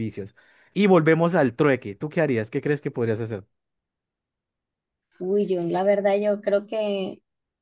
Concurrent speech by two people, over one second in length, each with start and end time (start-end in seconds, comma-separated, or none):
none